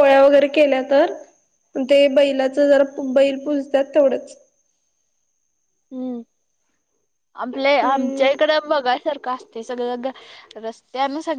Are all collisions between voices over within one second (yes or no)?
yes